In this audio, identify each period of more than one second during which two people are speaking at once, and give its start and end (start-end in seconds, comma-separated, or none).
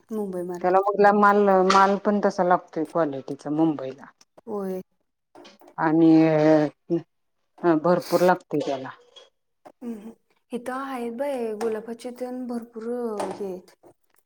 none